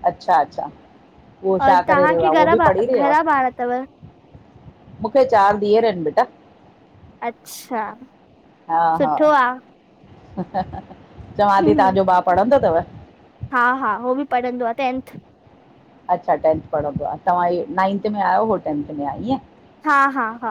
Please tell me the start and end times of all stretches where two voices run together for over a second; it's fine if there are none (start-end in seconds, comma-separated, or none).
1.6-3.1